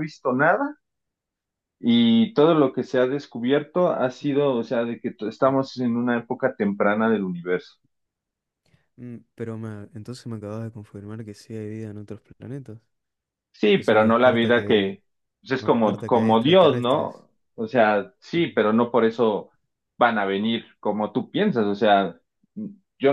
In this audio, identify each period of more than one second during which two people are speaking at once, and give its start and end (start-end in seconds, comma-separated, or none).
13.7-14.9, 15.6-17.2